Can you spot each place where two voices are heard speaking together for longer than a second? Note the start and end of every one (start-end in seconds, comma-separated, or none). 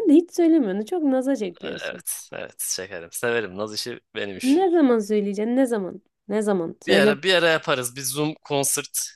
none